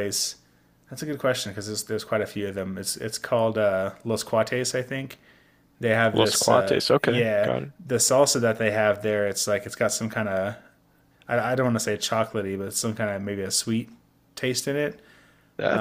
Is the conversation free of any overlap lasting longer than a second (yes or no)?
no